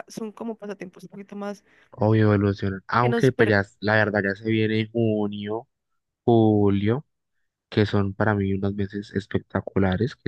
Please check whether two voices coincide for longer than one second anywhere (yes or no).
no